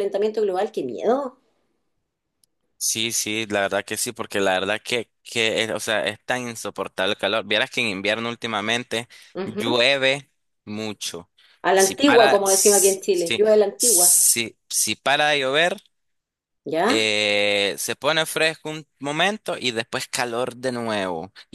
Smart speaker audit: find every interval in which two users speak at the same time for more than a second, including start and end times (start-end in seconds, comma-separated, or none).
11.7-14.2